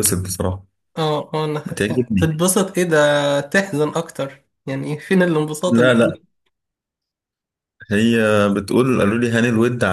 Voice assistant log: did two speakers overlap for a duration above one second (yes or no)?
no